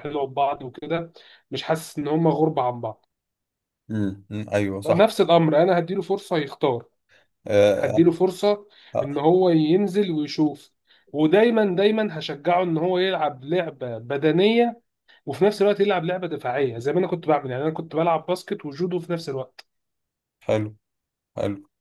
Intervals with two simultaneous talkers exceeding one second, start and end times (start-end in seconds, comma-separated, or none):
none